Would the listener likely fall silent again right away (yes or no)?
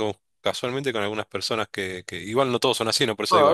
no